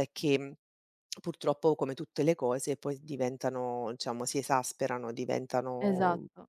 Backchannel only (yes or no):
no